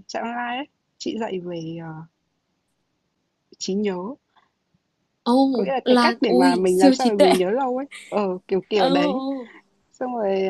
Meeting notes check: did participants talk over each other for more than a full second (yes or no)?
yes